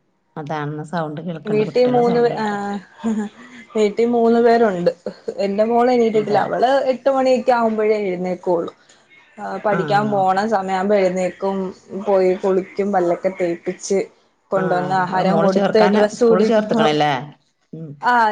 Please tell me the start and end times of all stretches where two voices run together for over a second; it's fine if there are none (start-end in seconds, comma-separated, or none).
14.6-16.8